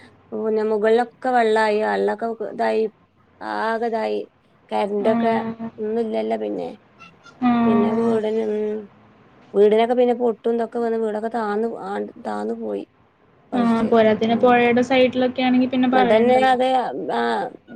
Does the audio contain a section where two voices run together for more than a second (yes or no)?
no